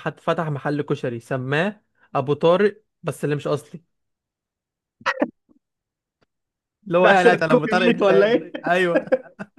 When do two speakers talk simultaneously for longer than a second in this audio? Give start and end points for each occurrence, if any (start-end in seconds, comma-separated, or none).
7.0-8.7